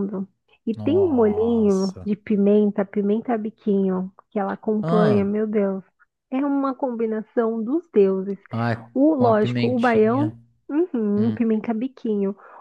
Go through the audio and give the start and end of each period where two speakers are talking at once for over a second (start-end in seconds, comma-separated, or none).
0.8-2.1, 8.9-10.3